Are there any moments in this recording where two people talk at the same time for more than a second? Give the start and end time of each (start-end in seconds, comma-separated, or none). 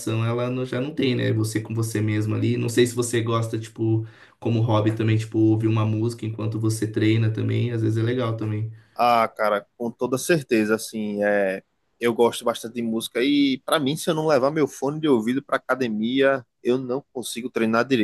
none